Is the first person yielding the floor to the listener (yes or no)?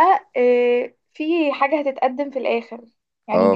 yes